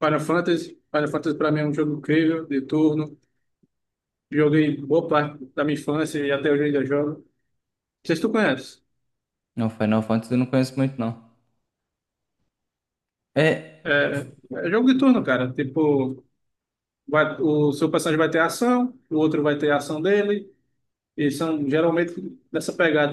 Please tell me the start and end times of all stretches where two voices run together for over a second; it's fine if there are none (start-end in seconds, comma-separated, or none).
none